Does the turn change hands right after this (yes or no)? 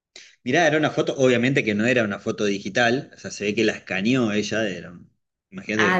yes